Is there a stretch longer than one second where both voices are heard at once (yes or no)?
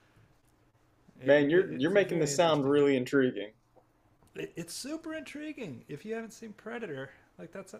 yes